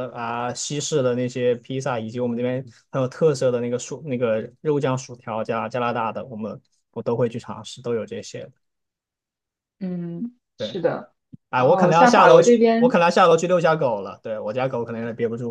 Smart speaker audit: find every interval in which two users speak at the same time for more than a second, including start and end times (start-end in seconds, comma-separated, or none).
11.5-12.9